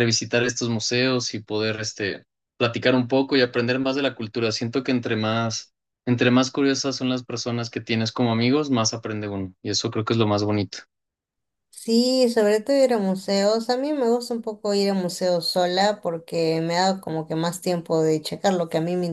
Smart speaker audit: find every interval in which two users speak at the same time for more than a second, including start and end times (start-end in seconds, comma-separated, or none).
none